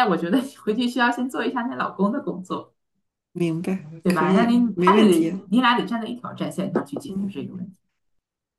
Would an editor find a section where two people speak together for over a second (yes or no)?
yes